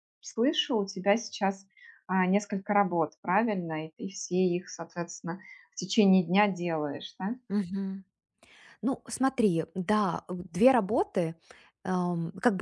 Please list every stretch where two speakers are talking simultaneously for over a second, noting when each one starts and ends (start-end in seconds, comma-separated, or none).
none